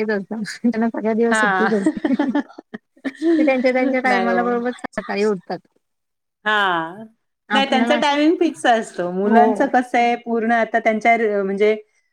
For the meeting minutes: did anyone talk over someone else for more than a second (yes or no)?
no